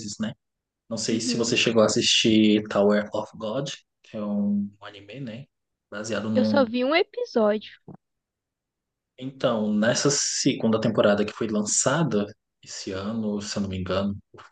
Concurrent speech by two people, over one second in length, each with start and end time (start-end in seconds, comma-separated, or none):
none